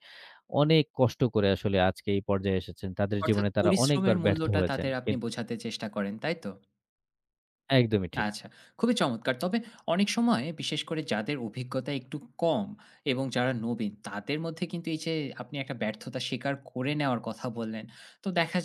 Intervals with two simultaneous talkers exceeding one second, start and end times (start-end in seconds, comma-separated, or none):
3.2-5.3